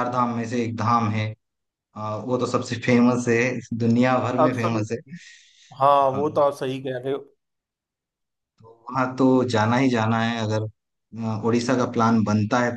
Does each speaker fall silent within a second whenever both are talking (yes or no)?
yes